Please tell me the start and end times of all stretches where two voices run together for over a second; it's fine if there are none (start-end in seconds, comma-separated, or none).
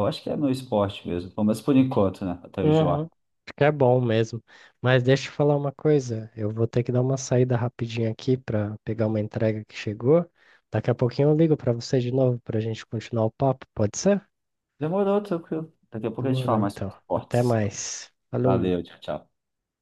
16.2-17.8